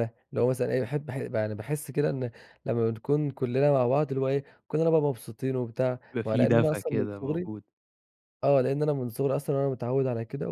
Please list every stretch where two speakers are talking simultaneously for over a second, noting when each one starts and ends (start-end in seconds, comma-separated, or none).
6.1-7.5